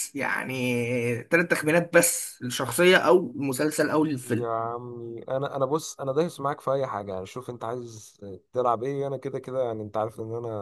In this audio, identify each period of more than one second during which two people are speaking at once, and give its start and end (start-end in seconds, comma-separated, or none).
none